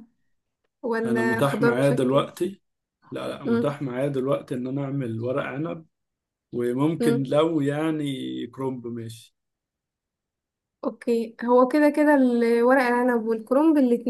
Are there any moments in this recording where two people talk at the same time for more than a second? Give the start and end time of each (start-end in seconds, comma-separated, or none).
1.1-2.3